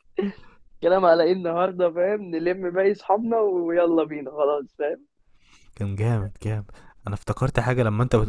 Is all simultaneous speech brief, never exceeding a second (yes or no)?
yes